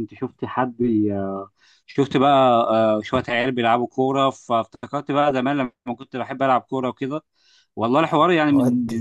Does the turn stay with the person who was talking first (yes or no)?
yes